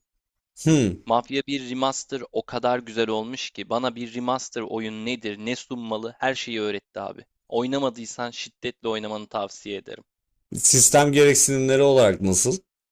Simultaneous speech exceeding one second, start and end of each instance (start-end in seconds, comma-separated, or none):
none